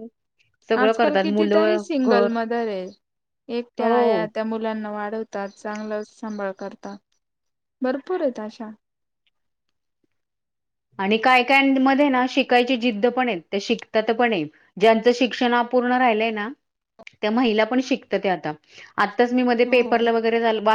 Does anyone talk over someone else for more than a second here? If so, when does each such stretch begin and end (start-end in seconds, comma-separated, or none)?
0.8-2.3